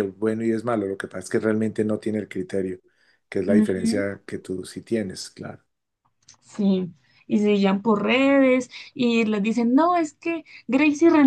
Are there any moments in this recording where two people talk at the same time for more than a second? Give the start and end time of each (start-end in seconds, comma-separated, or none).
none